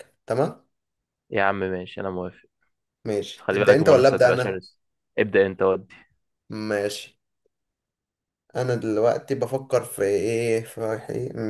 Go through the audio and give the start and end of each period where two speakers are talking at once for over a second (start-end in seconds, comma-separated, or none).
3.4-4.6